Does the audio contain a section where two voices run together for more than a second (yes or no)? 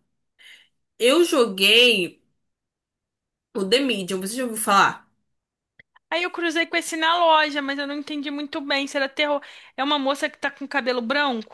no